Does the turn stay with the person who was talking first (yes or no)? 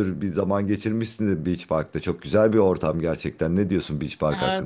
no